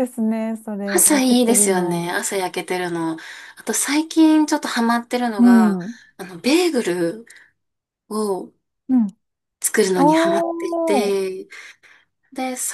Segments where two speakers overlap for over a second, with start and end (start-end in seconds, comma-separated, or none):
0.8-2.1, 9.9-11.2